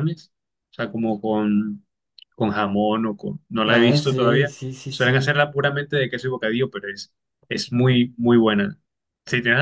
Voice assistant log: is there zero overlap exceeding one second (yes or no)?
no